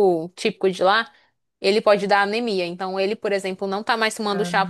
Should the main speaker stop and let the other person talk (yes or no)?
no